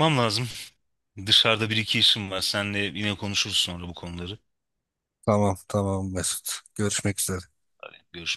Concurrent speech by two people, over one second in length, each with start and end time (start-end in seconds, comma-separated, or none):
none